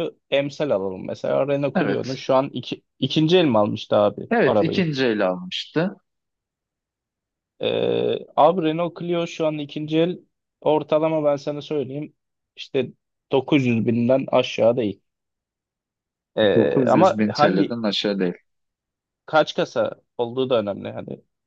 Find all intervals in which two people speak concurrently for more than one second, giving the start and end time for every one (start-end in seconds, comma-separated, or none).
16.5-17.8